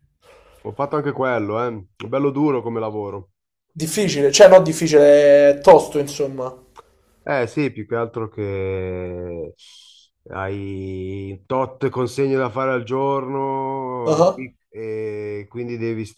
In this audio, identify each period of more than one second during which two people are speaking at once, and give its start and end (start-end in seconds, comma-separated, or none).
none